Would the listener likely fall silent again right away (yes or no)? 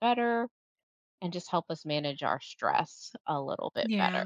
no